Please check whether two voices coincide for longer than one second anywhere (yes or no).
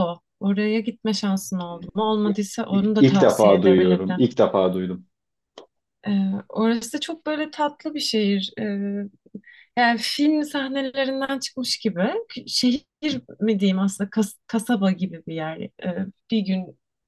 yes